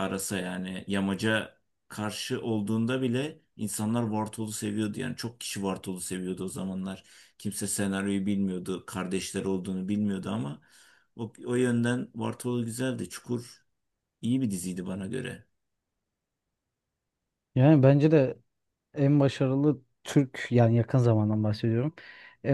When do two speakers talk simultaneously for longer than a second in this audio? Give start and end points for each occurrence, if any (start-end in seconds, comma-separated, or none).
none